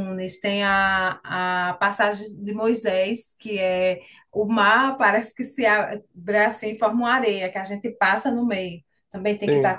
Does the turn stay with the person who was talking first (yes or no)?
yes